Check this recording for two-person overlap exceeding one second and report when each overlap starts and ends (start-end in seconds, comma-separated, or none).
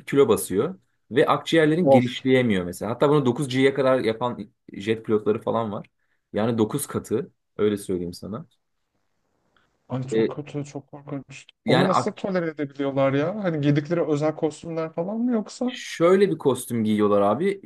none